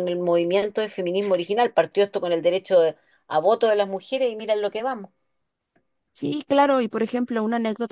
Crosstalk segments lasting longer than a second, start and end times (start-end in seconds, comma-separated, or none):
none